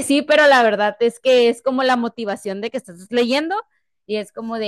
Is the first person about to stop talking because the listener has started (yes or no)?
no